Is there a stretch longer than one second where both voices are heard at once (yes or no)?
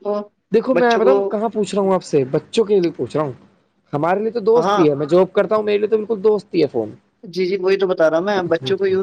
no